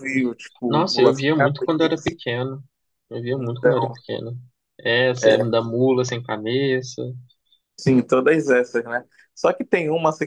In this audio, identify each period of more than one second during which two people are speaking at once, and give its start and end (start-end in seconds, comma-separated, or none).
0.6-2.1